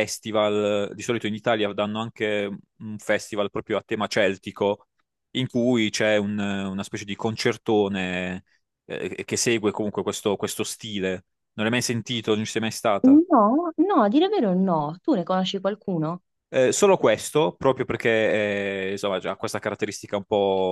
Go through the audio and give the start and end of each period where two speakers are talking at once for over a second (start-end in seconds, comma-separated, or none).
none